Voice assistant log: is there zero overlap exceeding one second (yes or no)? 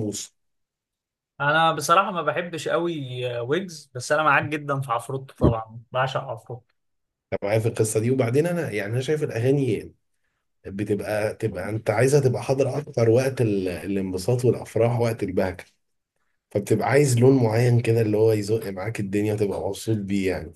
yes